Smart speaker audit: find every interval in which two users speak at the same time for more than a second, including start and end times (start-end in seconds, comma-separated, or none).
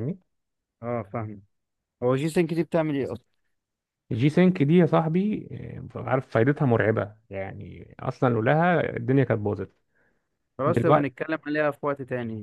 none